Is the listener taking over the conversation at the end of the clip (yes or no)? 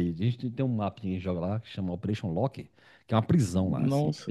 yes